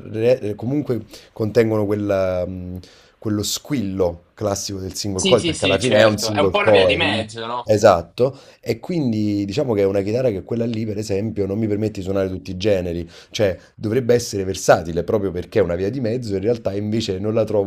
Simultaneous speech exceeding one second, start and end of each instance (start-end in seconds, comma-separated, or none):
5.1-7.2